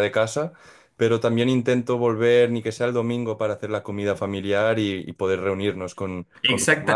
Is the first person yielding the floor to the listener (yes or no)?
no